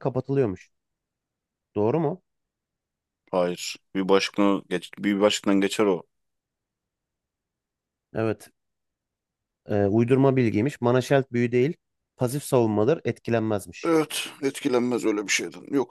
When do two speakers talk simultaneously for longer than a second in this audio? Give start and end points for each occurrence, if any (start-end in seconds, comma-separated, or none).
none